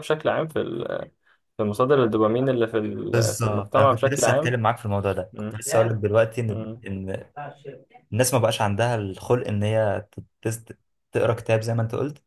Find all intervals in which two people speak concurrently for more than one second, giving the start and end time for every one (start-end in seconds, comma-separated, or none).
3.1-4.5